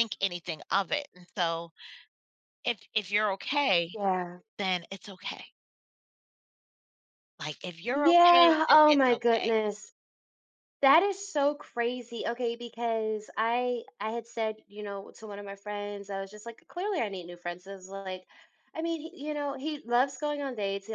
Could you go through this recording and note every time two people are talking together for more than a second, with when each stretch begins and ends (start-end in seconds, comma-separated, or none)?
7.9-9.5